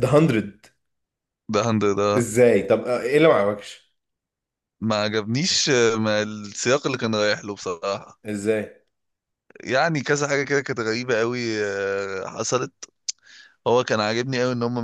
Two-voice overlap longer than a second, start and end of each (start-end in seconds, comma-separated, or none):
none